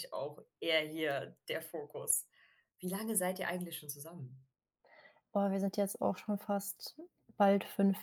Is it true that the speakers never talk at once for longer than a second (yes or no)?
yes